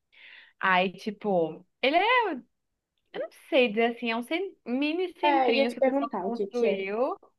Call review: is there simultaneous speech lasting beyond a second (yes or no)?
yes